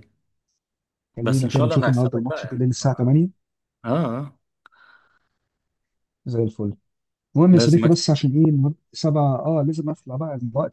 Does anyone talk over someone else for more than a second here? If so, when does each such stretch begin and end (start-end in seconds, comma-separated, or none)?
1.2-2.6